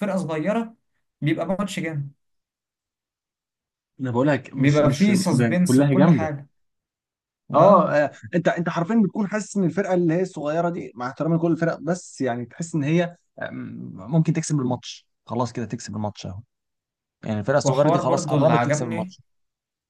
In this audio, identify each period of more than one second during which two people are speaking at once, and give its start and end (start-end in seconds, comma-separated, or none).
4.6-6.3, 17.6-19.1